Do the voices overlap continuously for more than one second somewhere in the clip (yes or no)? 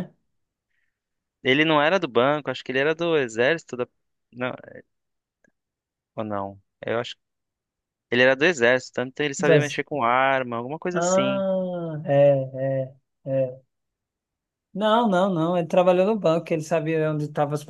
no